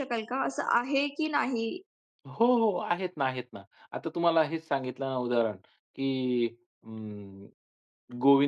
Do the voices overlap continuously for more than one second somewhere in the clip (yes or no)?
no